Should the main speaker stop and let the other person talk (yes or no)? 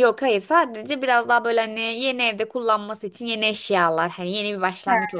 no